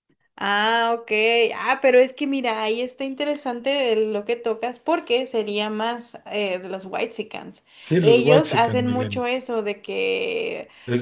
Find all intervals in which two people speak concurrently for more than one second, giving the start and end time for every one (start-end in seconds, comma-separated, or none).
8.0-9.2